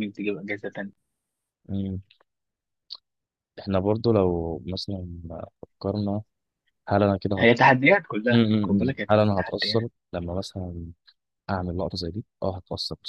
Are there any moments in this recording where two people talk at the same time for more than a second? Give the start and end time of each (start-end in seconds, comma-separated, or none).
8.3-9.9